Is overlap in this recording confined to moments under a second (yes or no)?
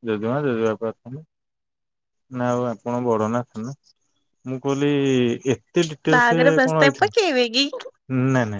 no